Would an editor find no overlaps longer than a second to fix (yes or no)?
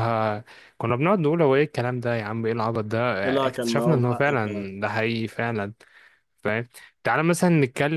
no